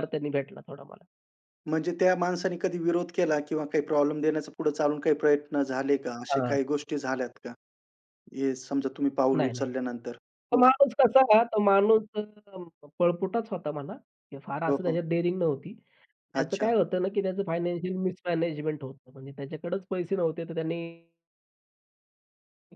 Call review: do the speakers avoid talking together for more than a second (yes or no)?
yes